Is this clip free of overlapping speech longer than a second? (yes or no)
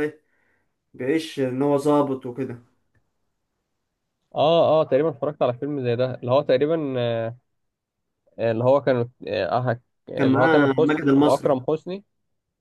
no